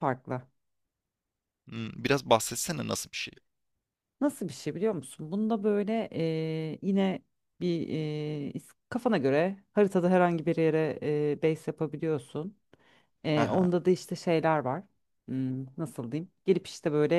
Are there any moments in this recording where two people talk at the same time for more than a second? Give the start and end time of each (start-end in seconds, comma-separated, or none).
none